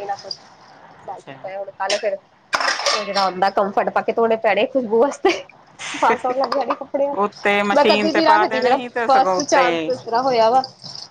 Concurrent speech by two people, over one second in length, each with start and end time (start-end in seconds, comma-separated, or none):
7.2-9.9